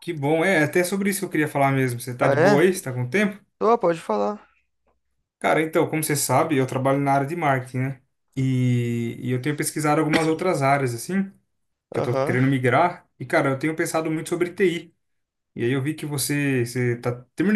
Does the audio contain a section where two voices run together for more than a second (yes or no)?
no